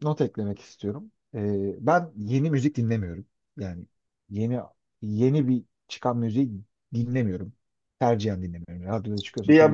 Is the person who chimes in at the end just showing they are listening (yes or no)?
no